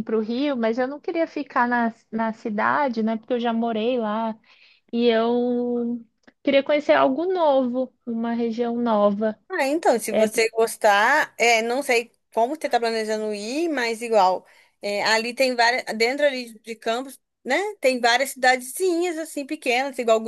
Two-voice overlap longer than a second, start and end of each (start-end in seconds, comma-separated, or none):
none